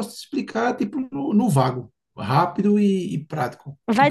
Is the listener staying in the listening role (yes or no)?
no